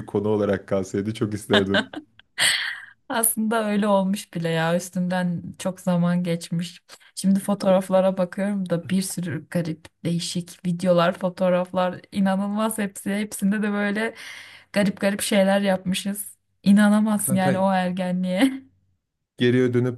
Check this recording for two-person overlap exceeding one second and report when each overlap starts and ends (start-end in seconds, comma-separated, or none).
none